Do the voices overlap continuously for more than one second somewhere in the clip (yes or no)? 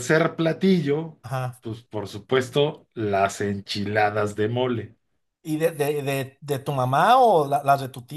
no